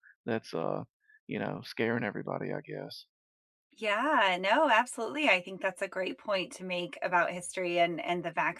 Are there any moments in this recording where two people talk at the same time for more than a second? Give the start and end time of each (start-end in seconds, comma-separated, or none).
none